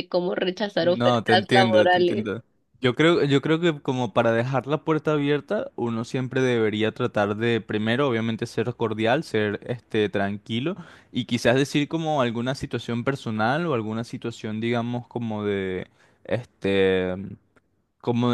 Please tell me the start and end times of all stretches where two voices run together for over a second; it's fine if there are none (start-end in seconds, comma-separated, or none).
0.8-2.3